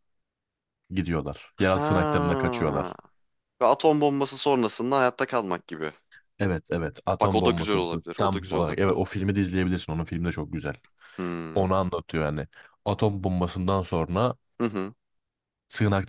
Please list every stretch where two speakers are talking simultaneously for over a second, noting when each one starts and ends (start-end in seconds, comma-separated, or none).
1.6-2.9, 7.2-9.0